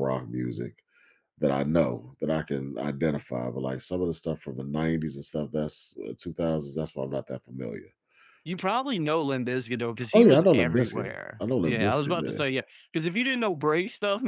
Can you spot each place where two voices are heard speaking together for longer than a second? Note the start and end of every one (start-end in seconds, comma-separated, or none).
10.1-12.4